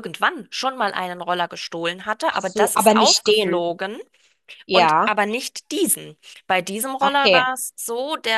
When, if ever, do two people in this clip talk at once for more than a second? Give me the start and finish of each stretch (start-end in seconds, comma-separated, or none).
2.3-3.7